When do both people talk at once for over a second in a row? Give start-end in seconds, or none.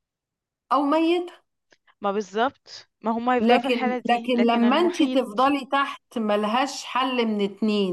3.4-5.2